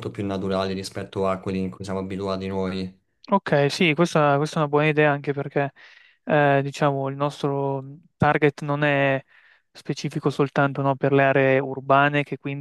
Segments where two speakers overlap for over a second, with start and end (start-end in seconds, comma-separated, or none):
none